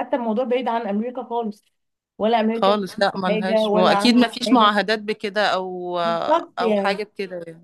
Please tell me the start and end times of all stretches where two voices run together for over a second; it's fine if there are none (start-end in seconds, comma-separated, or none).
2.5-4.7